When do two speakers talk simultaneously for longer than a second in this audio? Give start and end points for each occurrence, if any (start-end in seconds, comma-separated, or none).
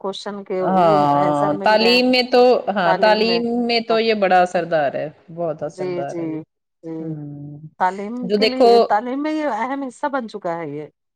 none